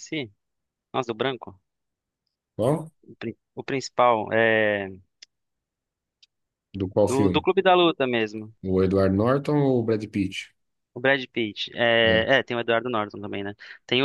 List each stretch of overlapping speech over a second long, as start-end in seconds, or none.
none